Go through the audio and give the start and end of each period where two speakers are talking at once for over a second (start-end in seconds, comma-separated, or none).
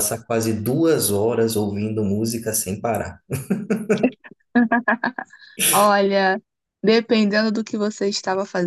none